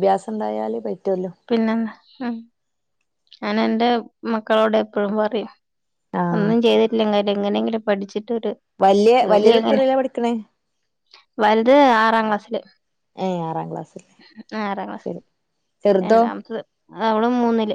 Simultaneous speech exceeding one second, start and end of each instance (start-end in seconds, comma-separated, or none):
none